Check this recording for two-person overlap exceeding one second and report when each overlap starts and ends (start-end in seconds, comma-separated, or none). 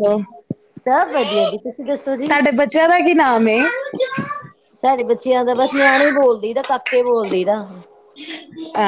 1.1-2.4